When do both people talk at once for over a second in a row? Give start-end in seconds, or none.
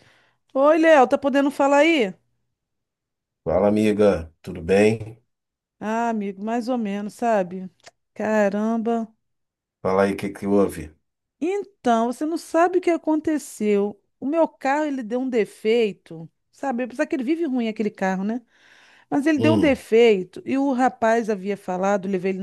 none